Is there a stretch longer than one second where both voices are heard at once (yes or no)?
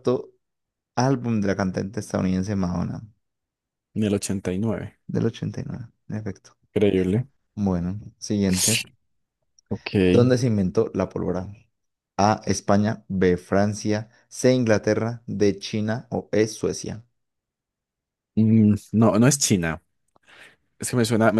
no